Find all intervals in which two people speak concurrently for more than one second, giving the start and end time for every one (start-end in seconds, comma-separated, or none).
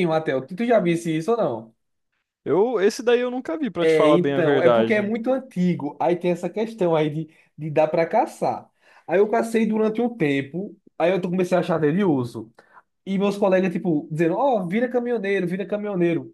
3.8-5.1